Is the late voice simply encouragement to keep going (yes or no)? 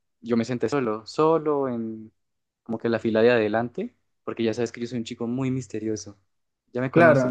no